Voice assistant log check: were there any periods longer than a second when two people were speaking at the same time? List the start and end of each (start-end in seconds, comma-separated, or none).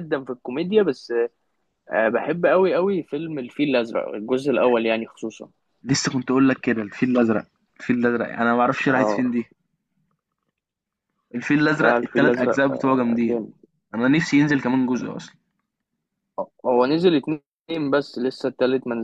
11.8-13.5